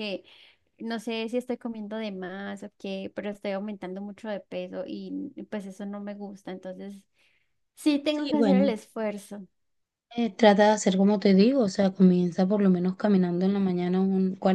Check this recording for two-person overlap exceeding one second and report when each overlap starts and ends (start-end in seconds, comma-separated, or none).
none